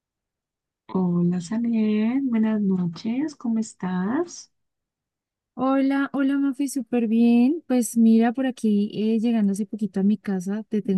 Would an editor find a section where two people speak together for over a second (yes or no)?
no